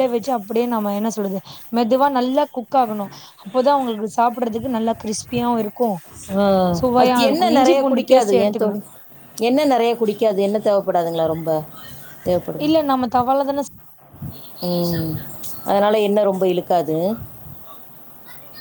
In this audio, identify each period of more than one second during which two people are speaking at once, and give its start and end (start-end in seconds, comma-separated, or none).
7.0-8.8